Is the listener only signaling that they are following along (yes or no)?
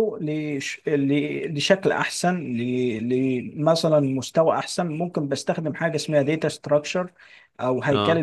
yes